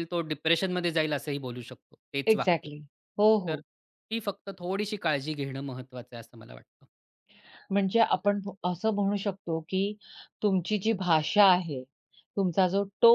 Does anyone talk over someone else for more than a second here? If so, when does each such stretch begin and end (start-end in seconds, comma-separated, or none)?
none